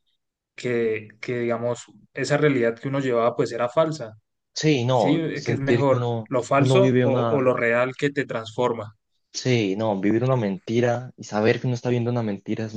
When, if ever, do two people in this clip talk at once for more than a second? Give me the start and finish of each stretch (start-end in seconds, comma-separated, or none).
4.9-7.5